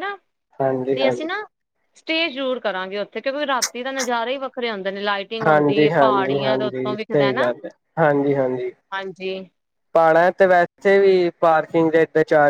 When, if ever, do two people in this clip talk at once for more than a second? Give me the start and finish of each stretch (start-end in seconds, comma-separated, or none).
5.5-7.5